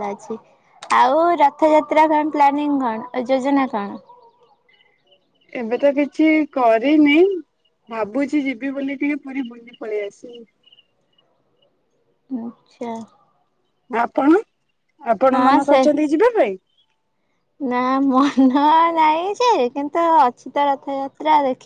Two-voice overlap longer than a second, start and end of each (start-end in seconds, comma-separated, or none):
none